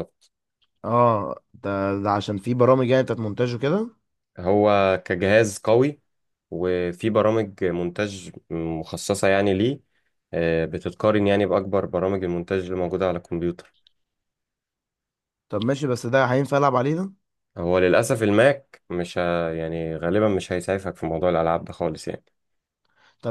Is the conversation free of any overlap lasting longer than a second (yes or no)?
yes